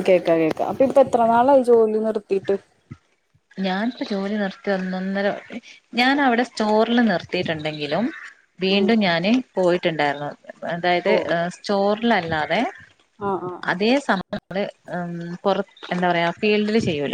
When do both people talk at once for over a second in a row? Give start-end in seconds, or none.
none